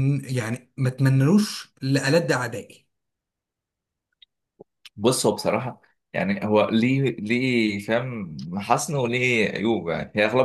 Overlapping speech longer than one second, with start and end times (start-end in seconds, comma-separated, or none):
none